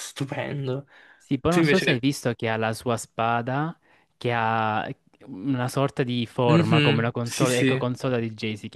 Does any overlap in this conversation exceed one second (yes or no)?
yes